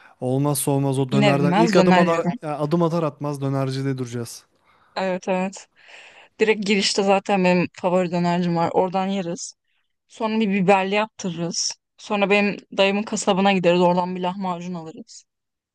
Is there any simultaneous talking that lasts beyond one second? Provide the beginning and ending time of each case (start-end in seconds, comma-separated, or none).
1.1-2.3